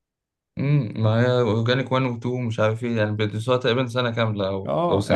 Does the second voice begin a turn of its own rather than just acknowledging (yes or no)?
yes